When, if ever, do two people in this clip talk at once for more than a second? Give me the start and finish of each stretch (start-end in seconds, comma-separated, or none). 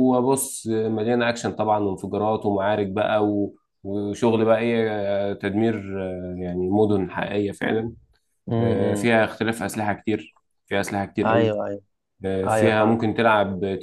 none